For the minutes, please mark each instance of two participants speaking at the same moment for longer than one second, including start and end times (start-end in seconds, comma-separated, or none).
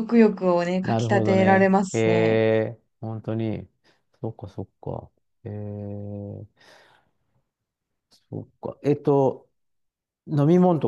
0.8-2.4